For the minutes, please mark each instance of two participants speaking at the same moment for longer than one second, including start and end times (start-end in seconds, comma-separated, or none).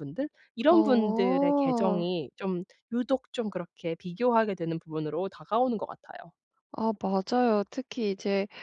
0.7-2.1